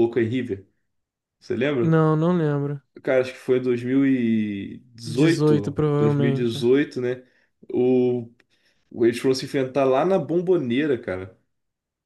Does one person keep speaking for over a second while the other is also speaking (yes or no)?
yes